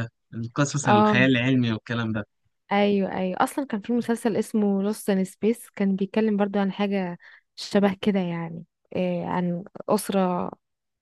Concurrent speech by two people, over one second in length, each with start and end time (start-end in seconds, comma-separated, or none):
none